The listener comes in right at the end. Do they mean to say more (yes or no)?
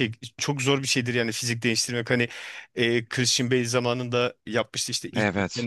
no